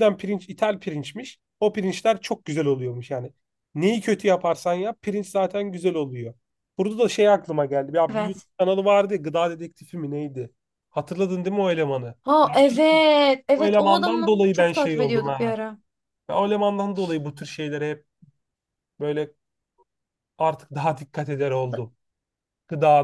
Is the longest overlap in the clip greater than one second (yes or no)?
yes